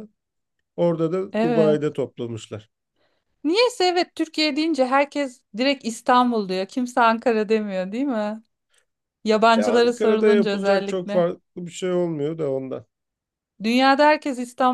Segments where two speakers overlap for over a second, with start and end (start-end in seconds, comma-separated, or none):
9.6-11.3